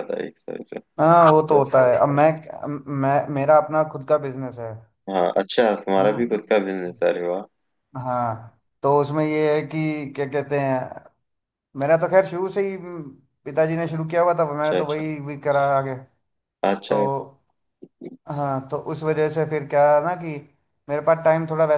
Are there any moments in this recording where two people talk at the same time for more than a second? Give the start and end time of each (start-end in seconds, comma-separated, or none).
none